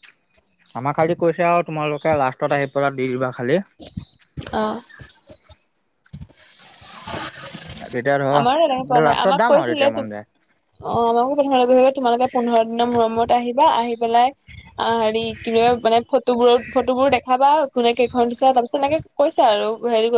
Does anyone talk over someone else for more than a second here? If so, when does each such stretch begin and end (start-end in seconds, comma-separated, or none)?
8.4-10.0